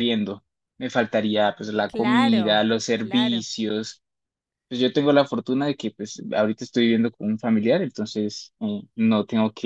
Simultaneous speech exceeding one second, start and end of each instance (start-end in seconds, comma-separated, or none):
1.9-3.5